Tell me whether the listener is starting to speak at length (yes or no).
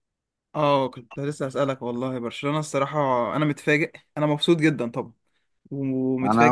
yes